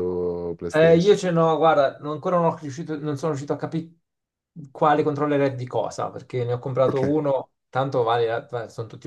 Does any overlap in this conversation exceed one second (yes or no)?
no